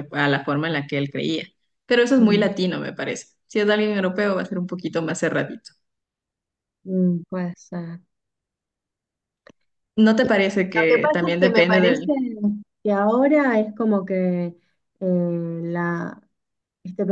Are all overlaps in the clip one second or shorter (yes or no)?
no